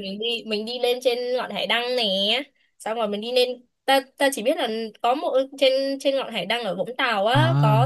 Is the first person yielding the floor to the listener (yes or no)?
yes